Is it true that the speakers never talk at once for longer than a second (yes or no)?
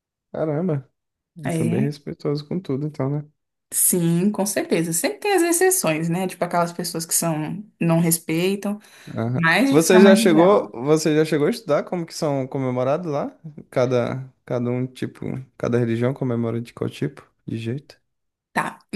no